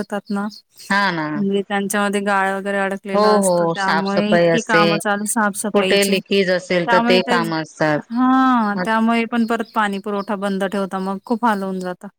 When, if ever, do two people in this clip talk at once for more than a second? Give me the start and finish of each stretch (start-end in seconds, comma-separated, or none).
3.1-4.9